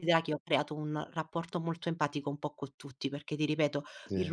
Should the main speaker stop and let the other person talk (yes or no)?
no